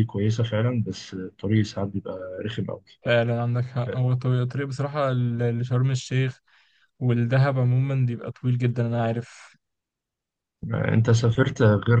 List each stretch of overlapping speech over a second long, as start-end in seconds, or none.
none